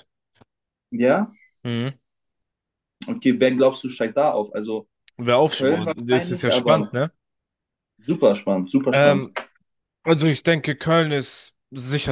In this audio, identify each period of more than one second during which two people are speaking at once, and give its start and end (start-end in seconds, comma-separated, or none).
5.5-6.9